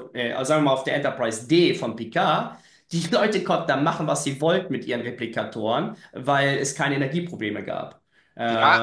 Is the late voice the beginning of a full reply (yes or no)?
yes